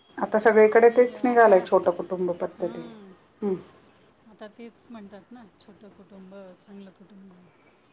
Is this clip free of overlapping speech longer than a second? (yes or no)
yes